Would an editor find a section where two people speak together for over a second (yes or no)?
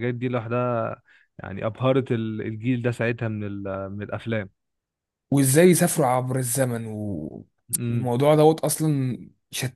no